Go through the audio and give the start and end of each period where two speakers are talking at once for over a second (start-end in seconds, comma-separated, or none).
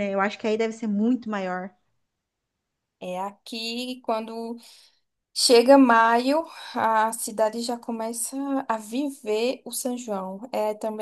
none